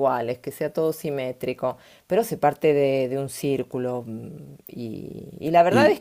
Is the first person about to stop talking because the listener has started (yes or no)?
no